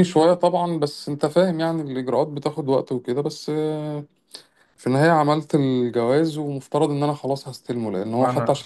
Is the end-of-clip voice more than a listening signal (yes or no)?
no